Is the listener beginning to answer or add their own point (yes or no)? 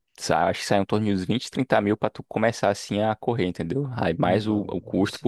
no